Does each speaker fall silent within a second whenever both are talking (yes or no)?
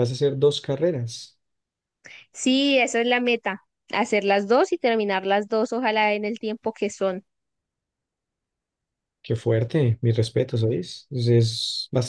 yes